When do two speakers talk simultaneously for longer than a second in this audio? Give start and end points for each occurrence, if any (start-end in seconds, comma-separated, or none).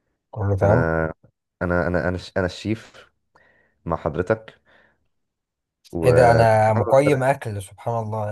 6.0-7.3